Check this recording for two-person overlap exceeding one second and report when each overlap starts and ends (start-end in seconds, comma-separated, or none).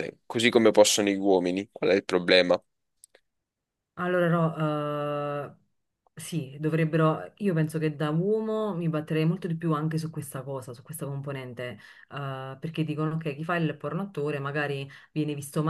none